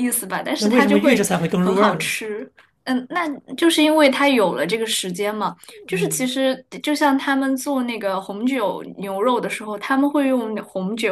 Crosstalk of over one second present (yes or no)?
yes